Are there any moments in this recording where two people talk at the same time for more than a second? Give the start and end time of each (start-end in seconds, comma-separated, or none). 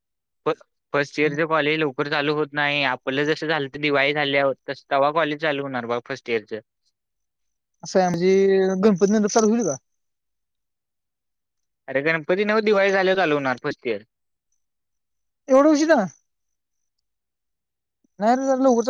none